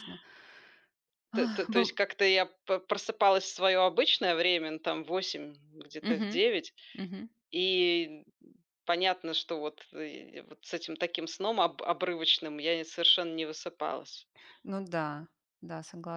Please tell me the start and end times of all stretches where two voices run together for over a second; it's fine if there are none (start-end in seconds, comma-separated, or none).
none